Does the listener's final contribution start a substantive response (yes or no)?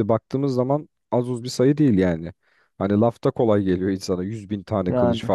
no